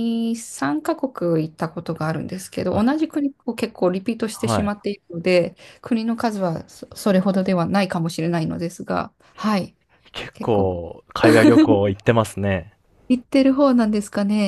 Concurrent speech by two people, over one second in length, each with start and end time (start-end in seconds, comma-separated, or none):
none